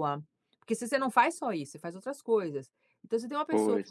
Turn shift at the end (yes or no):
no